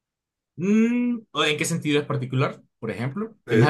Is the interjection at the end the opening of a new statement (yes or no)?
yes